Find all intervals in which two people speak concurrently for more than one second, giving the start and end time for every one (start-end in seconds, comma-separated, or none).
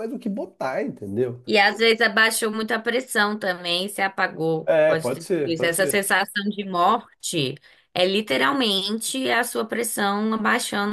4.6-6.0